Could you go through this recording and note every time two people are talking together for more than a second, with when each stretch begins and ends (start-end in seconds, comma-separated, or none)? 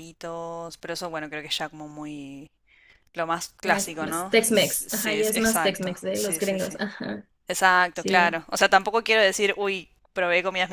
3.7-6.8